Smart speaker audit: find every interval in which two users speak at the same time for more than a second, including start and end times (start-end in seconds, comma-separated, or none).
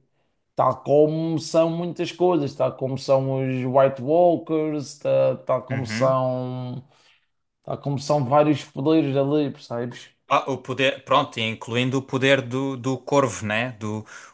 none